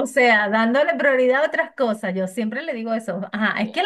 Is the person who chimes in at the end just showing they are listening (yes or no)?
yes